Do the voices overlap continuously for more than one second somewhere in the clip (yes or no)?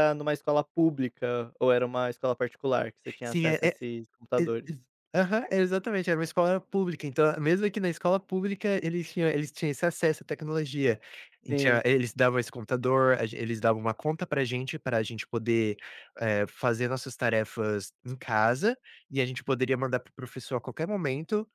no